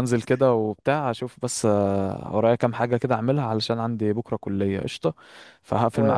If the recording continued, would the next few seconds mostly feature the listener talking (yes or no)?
yes